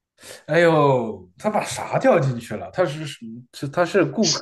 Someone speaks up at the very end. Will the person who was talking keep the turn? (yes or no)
no